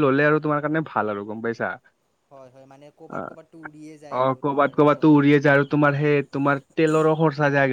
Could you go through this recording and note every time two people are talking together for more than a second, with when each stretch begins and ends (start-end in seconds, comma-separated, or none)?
3.2-5.2